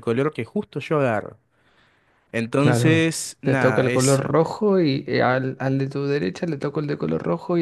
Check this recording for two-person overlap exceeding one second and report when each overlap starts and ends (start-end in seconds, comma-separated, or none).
2.6-4.2